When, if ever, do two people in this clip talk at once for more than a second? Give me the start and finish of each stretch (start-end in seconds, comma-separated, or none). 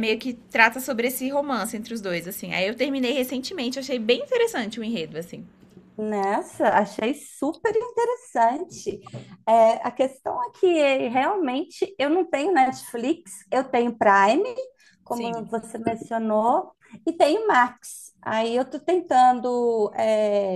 none